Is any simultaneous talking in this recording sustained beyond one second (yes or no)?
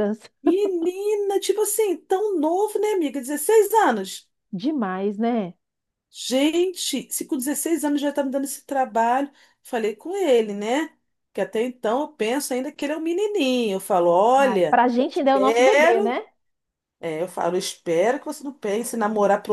yes